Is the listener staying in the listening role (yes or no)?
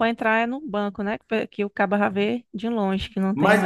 no